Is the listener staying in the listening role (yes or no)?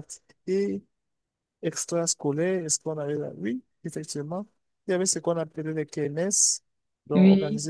yes